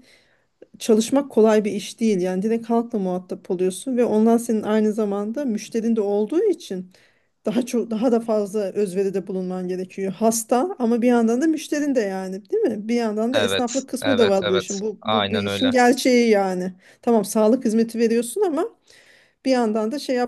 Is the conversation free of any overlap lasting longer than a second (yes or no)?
no